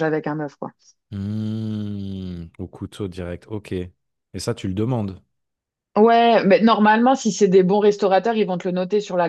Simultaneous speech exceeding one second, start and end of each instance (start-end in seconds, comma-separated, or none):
none